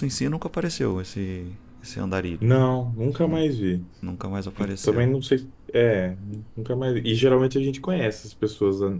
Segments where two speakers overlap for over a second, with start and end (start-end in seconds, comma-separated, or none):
none